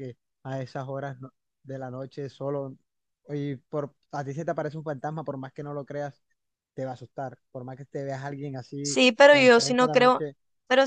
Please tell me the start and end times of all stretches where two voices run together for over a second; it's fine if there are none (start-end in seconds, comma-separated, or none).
8.8-10.2